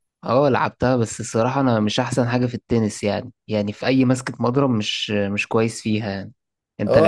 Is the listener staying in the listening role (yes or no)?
no